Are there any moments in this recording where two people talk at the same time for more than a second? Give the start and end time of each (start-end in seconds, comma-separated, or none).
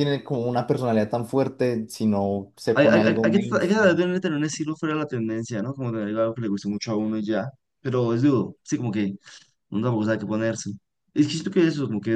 2.7-4.0